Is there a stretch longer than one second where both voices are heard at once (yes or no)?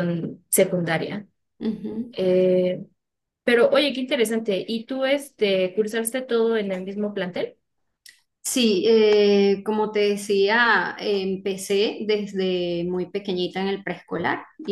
no